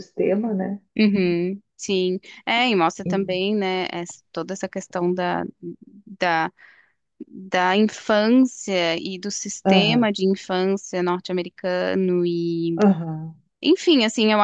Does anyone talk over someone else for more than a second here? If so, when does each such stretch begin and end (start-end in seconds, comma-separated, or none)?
none